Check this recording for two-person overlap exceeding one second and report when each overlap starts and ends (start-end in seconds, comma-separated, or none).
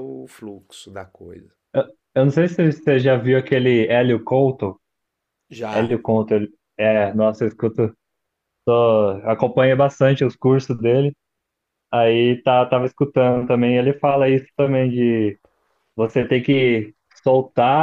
none